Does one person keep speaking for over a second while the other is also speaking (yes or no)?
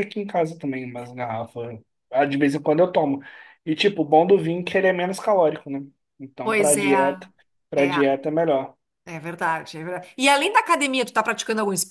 no